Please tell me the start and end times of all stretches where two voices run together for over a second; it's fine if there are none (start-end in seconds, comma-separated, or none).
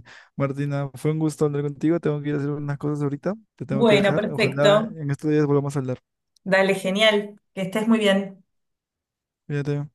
3.7-4.9